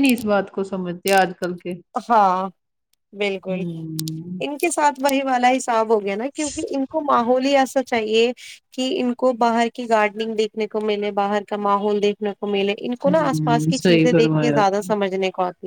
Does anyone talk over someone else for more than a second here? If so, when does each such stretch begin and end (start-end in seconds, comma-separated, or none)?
13.1-14.7